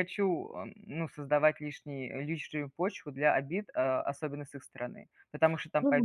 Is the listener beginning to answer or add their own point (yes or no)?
yes